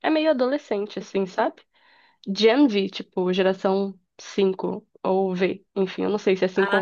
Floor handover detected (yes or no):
yes